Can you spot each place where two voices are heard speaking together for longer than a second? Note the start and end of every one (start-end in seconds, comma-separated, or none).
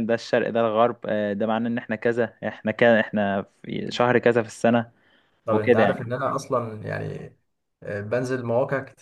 none